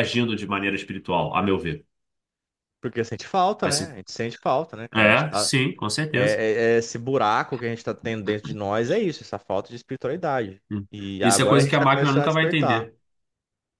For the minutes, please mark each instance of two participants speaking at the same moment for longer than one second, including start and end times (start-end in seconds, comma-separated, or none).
10.7-12.9